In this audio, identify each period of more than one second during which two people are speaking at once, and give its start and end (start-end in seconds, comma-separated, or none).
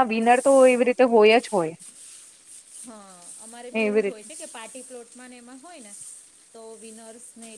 none